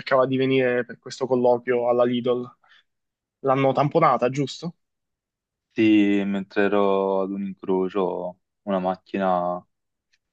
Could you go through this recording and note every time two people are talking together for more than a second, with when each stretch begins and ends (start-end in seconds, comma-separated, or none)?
none